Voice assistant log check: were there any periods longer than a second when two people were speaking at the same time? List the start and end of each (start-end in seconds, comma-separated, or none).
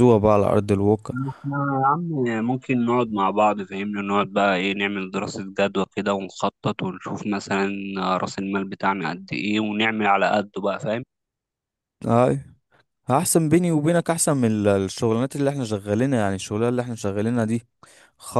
none